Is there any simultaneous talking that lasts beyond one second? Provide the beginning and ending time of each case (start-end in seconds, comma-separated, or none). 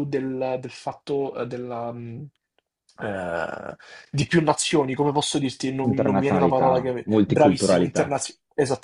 5.9-8.2